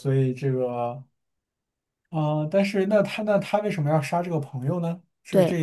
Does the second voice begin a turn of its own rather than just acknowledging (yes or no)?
yes